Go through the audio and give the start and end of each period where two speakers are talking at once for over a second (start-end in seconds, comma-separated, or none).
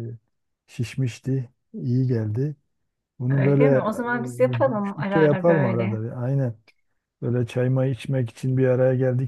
4.8-6.0